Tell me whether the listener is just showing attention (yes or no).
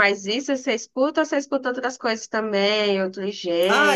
no